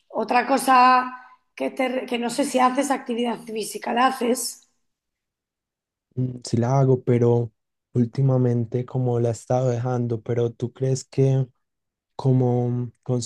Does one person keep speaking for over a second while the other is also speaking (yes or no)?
no